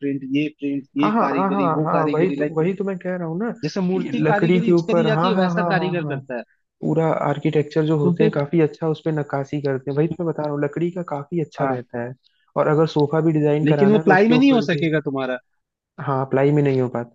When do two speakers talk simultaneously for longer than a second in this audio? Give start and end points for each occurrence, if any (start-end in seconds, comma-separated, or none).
1.0-2.7, 3.9-6.2, 13.6-14.9